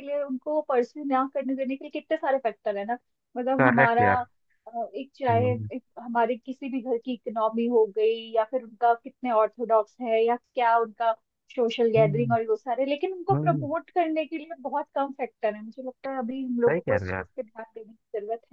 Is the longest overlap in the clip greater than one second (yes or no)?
no